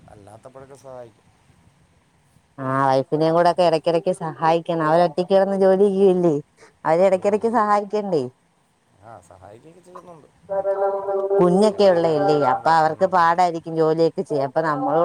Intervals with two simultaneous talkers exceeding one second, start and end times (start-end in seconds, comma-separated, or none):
11.8-13.5